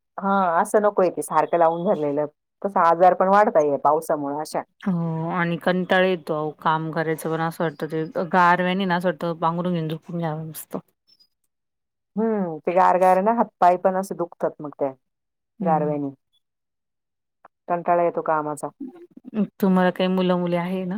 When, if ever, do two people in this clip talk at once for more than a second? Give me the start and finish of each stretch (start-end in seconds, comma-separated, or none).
none